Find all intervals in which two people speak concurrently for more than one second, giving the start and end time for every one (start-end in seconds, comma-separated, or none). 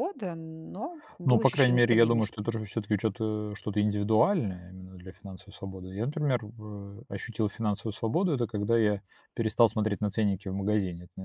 1.2-2.5